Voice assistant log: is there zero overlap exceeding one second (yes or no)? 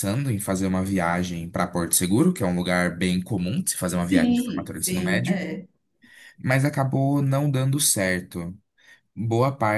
no